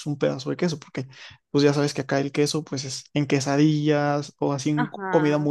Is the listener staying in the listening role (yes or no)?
no